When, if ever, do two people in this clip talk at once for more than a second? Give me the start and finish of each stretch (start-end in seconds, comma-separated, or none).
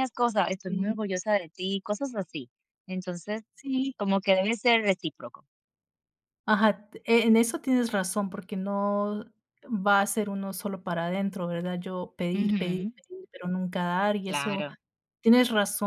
none